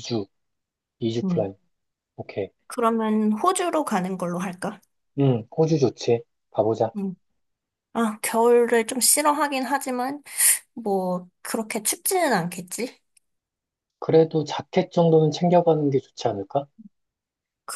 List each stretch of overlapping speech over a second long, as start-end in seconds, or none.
none